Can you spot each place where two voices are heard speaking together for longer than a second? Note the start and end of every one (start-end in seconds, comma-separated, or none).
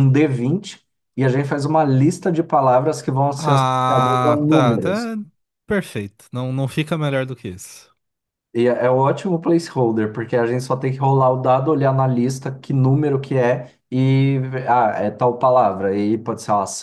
3.4-5.1